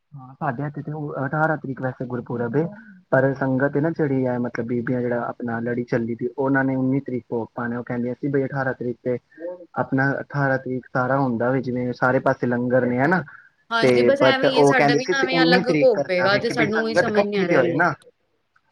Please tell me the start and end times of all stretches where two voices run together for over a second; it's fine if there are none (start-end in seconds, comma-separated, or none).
14.2-17.8